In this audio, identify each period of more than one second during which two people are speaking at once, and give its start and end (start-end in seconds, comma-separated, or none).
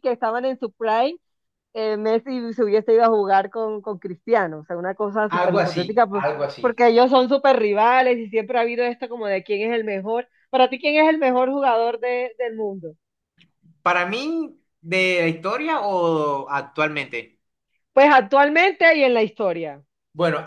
5.3-6.8